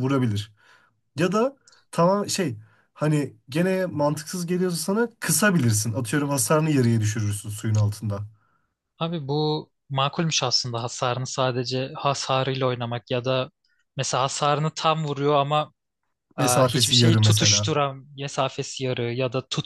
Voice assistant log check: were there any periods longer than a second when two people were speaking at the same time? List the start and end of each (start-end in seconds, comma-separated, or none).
16.4-17.7